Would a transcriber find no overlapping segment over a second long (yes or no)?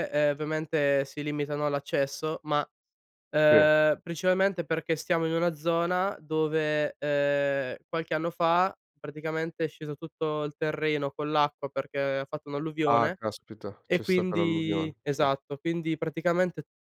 no